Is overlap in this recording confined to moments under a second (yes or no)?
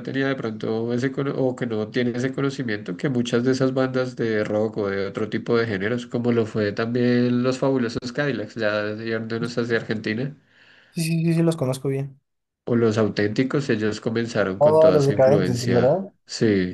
no